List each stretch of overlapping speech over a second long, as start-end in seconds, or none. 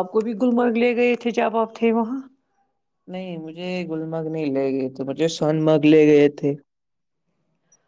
none